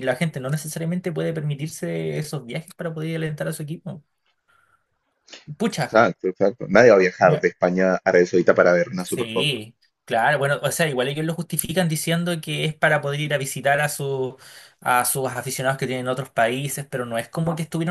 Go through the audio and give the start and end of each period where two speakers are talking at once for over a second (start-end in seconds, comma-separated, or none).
none